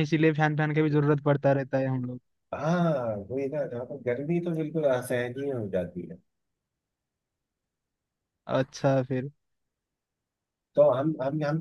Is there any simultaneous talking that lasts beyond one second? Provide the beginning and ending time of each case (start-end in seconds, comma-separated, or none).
none